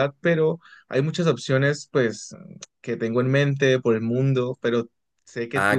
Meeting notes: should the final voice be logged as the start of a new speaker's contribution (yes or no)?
yes